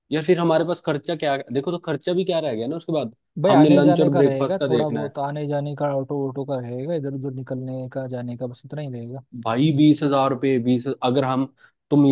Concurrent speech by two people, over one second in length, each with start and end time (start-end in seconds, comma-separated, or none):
3.4-5.1